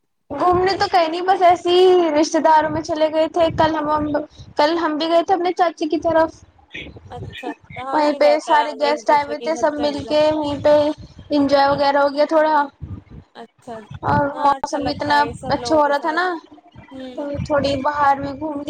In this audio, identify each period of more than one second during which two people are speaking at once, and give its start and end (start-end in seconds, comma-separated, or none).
7.9-10.2, 14.3-16.2